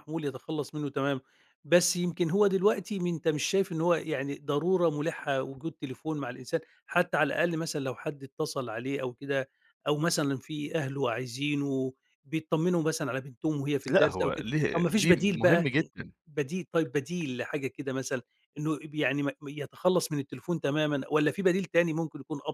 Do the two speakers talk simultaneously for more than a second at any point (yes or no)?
yes